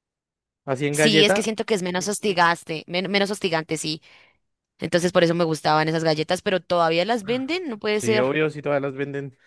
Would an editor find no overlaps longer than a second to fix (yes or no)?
yes